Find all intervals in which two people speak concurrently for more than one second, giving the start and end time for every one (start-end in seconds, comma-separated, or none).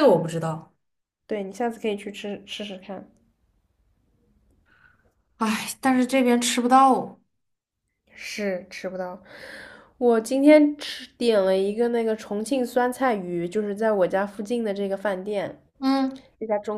none